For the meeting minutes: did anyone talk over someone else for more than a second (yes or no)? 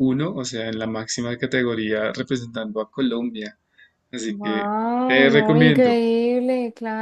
yes